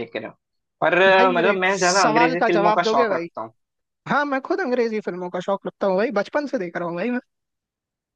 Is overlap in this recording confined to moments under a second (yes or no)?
no